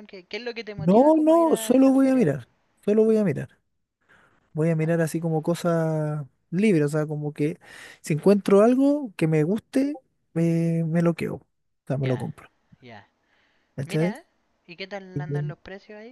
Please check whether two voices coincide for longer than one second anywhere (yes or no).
yes